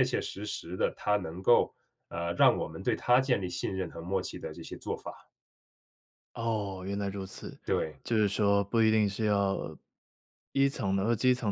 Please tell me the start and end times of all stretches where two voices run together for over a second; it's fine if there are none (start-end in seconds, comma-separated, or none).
none